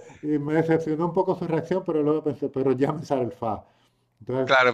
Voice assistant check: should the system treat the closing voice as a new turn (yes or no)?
yes